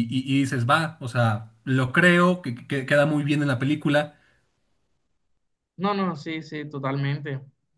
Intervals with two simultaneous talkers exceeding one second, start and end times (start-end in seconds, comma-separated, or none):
none